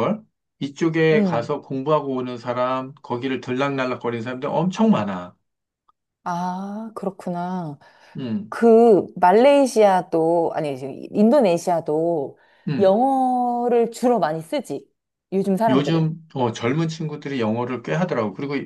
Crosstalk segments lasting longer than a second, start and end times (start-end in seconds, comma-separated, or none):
none